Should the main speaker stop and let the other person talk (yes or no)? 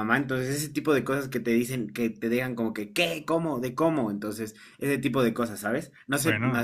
no